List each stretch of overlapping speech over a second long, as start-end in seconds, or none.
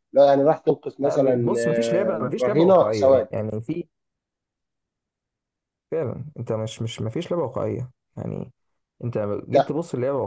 1.0-3.3